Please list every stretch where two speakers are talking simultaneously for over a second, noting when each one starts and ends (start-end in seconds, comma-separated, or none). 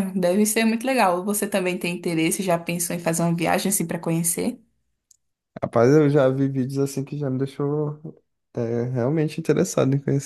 none